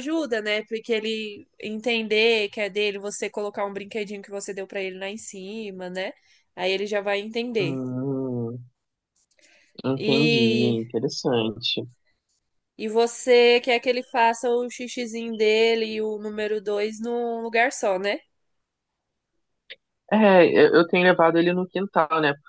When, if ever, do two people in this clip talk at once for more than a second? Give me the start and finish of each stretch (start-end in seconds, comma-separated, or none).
none